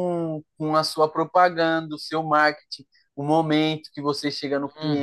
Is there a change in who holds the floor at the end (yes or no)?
no